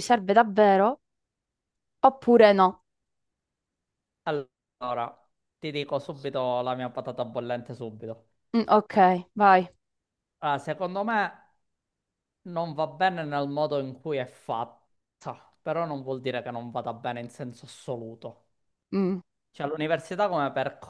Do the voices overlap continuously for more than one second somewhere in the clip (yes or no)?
no